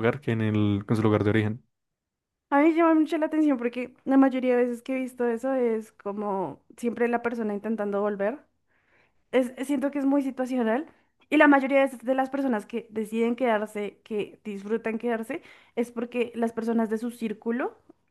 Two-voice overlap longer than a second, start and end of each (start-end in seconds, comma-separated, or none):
none